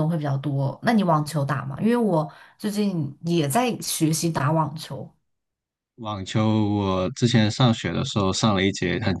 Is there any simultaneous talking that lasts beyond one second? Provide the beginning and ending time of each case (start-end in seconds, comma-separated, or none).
none